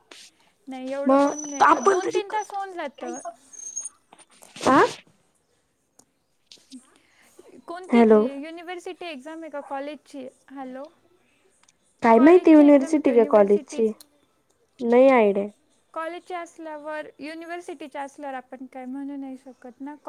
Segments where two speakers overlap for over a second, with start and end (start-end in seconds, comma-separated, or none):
12.1-13.8